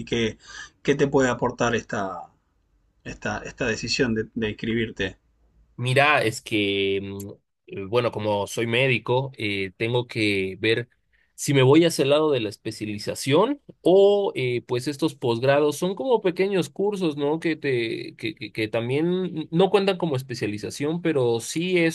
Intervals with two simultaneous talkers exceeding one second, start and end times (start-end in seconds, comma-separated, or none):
none